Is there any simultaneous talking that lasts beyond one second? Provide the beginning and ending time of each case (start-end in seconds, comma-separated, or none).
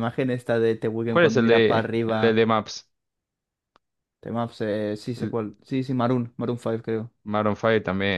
1.1-2.4